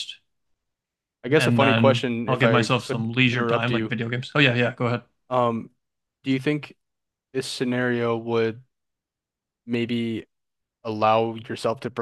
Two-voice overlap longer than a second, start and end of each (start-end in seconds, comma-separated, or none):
1.4-3.9